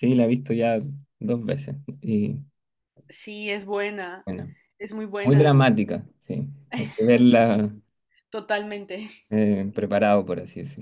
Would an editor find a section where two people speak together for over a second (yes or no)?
no